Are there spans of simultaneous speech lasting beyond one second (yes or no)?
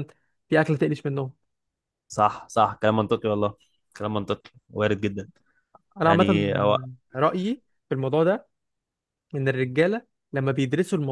no